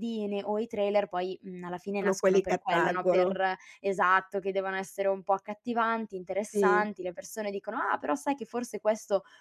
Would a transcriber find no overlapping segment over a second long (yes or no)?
no